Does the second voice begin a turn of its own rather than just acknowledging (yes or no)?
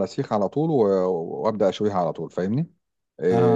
yes